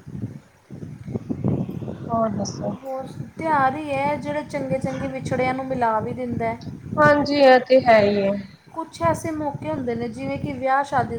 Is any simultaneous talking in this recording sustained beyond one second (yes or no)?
no